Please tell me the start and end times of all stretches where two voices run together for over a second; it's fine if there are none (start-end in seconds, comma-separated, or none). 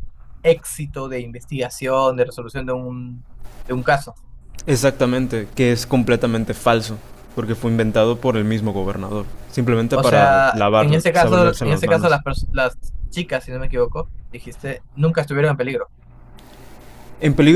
9.9-12.2